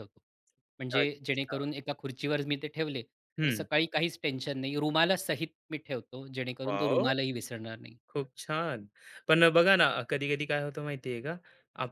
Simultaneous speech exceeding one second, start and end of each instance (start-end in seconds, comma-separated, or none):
none